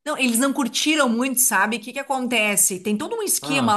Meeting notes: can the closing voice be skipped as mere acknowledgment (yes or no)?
yes